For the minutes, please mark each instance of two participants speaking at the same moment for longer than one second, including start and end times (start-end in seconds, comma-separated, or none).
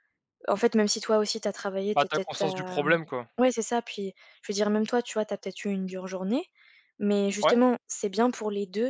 1.9-3.3